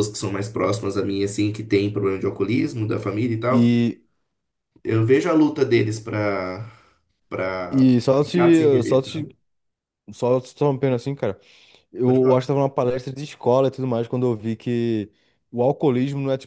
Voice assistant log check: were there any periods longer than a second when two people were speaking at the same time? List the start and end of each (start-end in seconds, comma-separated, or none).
7.7-9.3